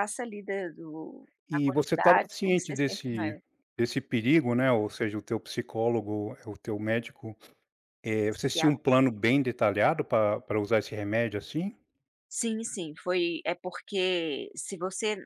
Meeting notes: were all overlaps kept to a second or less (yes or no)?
no